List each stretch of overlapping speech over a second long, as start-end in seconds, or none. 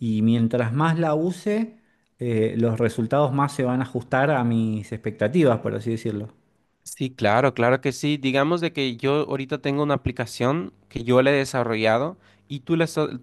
none